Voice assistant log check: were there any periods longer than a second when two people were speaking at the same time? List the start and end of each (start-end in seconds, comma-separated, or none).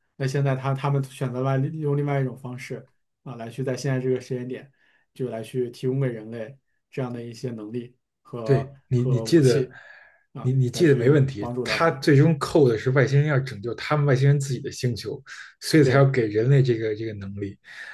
8.4-9.7, 10.4-12.0